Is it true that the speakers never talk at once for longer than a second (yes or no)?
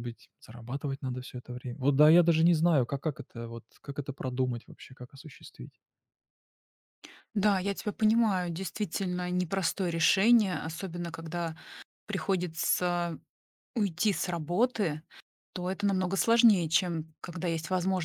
yes